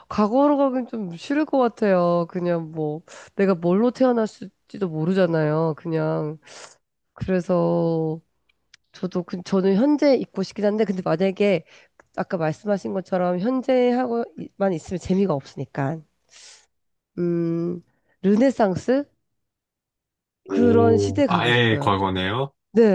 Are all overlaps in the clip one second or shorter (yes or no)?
no